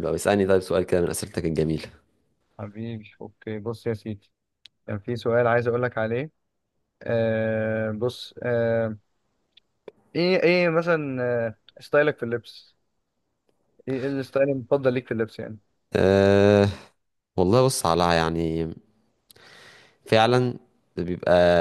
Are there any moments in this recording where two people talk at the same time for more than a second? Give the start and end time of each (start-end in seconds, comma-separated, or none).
none